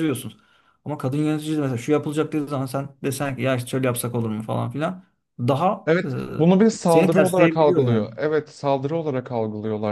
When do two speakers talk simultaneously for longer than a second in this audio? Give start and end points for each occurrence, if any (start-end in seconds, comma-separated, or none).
6.9-8.1